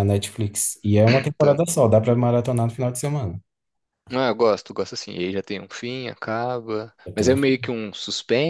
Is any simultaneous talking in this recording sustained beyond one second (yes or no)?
no